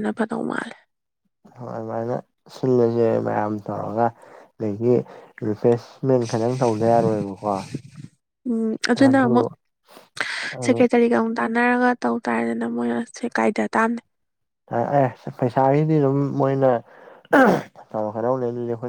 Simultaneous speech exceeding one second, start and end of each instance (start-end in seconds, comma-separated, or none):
none